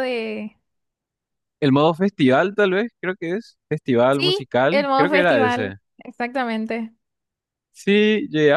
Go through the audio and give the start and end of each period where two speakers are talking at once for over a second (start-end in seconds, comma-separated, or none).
4.2-5.7